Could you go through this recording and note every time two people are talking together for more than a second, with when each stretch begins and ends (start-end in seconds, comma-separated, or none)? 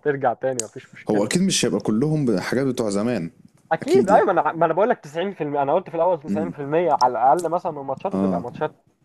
none